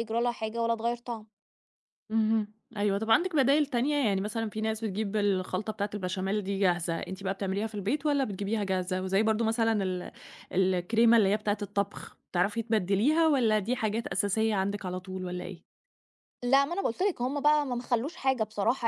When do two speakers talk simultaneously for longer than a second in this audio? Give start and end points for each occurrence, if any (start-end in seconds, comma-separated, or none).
none